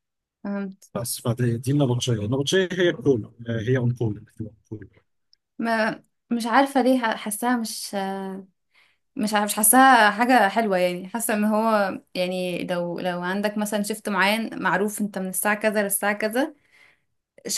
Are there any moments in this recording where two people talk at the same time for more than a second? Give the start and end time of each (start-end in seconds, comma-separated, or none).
none